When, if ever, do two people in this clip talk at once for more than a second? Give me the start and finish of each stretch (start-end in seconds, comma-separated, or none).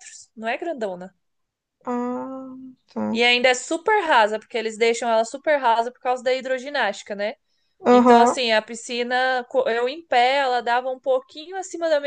none